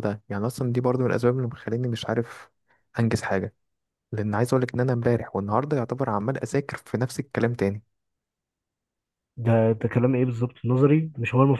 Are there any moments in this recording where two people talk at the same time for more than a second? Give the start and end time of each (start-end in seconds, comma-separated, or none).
none